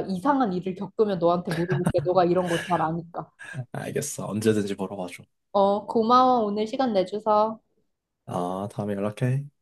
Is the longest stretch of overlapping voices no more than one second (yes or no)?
yes